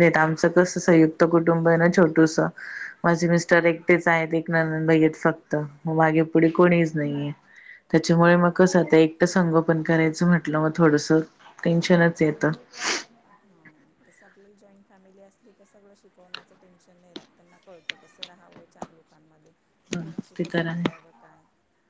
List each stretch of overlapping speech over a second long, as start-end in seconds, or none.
none